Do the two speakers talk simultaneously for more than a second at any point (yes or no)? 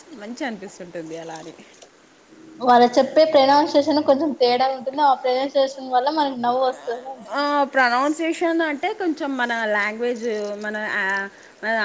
no